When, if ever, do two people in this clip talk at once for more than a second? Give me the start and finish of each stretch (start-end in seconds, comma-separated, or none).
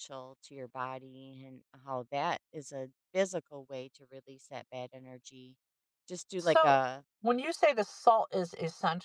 none